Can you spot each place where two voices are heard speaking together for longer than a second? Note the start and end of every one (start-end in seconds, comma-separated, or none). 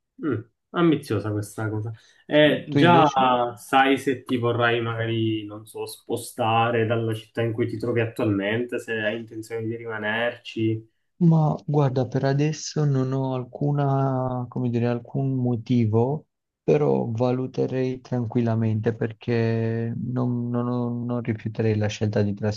none